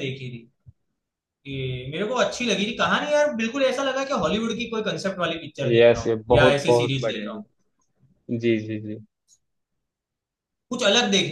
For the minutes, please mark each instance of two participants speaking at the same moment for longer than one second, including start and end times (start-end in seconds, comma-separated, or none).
5.7-7.4